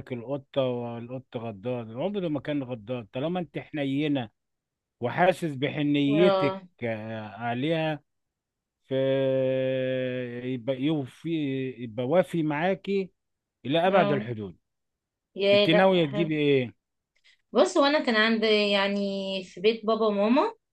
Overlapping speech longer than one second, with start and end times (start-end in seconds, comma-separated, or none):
none